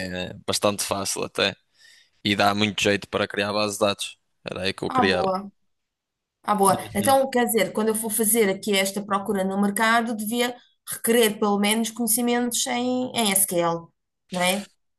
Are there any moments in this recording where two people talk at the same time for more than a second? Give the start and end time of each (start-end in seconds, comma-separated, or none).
none